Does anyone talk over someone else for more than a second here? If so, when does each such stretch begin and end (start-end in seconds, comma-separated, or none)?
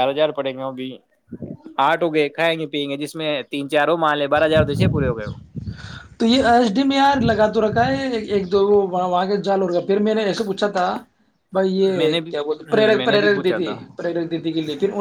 12.0-13.8